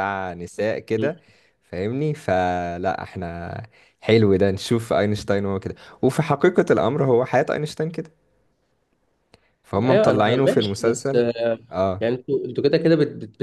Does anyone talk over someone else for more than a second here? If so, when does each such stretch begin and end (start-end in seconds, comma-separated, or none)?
9.8-11.2